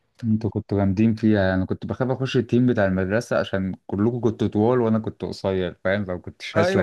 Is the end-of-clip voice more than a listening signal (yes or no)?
yes